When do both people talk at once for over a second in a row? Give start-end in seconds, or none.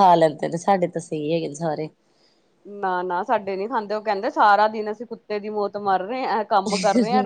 none